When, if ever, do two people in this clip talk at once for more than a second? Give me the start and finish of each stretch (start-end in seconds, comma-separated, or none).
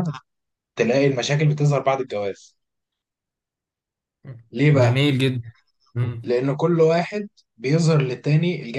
none